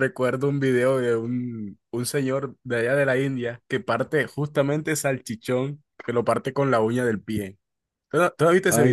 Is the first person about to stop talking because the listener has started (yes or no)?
yes